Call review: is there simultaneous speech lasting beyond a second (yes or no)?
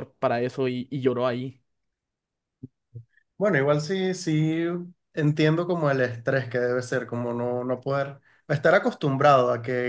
no